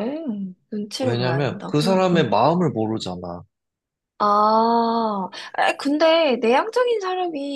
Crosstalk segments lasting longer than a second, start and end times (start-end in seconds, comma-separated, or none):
1.0-2.3